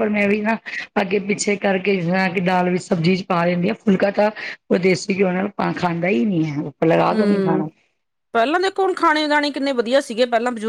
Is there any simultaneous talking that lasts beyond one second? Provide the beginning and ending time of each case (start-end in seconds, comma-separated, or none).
none